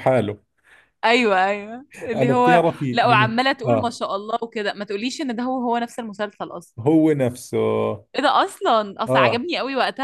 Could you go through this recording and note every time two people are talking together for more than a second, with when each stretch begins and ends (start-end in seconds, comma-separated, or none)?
2.1-4.0